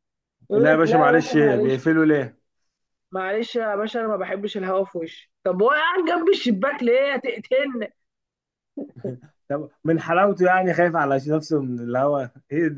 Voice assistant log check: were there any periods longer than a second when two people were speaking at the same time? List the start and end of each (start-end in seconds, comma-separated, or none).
0.5-1.8